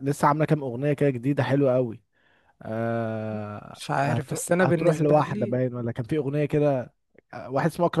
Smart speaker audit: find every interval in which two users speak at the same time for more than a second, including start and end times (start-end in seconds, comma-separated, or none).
3.7-5.6